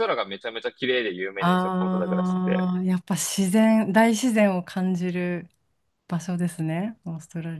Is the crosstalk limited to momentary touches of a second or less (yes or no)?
no